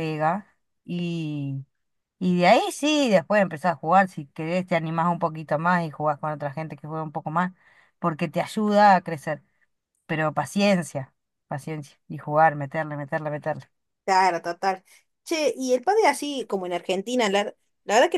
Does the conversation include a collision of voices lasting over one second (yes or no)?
no